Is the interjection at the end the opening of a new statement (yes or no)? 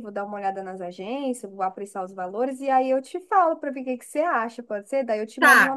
yes